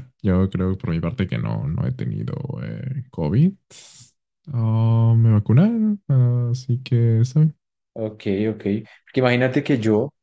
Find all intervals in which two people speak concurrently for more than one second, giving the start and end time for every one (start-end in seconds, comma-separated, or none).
none